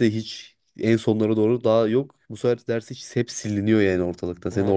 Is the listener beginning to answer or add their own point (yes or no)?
yes